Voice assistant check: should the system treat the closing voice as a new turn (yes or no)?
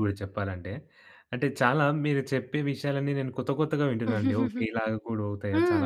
yes